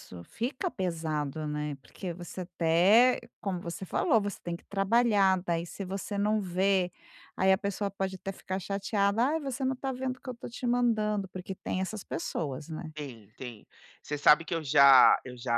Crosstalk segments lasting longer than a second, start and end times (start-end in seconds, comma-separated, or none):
none